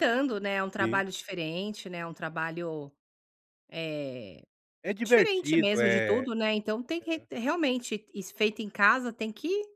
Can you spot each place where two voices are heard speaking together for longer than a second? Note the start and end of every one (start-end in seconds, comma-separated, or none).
5.0-6.3